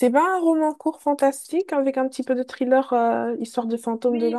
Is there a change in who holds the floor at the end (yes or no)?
yes